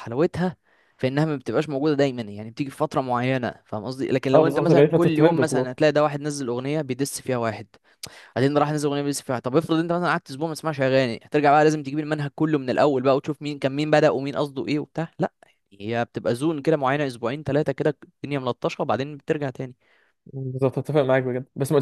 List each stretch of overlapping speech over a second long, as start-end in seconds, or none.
4.3-5.7